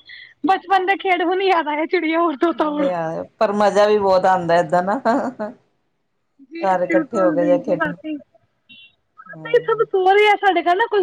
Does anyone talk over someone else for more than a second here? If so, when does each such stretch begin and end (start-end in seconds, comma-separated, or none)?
6.6-8.0